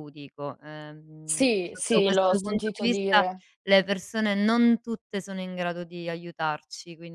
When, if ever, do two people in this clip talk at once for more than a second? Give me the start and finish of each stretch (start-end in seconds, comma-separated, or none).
1.2-3.2